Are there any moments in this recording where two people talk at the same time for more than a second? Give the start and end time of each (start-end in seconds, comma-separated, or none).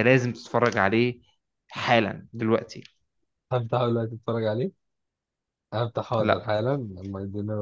none